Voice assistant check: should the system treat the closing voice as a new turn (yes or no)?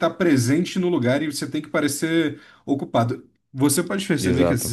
no